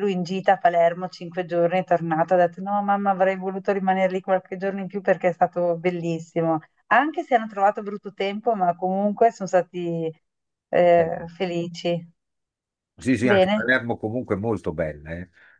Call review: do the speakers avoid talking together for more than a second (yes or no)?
yes